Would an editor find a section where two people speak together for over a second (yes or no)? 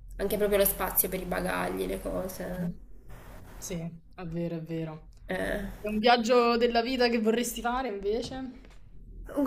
no